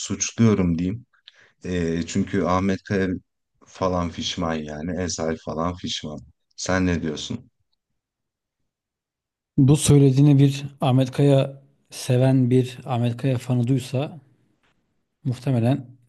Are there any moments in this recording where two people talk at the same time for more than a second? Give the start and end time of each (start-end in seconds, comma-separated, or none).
none